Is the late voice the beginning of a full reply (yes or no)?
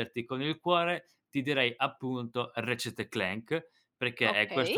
no